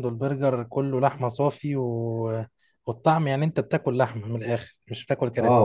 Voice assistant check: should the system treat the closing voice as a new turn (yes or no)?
yes